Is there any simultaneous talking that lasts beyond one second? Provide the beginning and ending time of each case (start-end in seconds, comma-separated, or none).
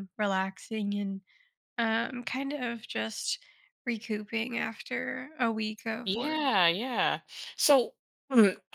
none